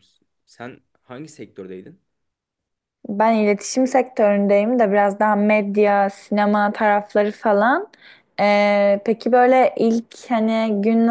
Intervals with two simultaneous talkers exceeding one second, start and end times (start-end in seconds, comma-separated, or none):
none